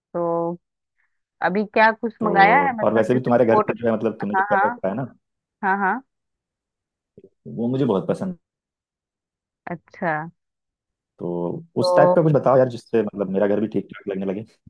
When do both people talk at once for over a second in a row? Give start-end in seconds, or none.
2.2-3.7